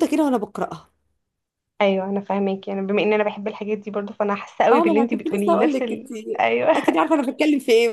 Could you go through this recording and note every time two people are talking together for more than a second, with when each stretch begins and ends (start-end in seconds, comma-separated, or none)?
4.7-6.1